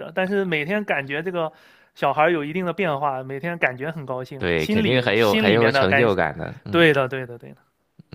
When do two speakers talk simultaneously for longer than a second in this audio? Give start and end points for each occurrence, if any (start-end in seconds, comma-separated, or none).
4.4-6.1